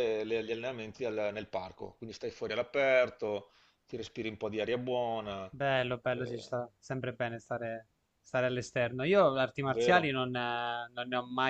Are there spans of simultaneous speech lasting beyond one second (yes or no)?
no